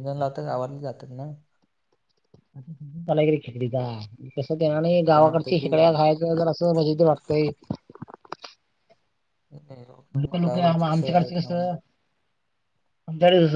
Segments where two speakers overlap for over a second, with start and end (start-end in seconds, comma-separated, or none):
10.2-11.7